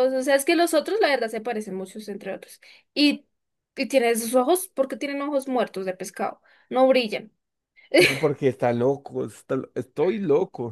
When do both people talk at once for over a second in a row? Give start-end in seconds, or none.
none